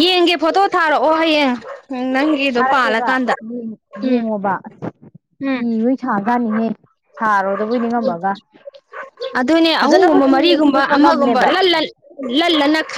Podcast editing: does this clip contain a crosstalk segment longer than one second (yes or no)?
yes